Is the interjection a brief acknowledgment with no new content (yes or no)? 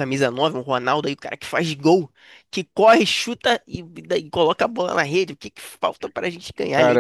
no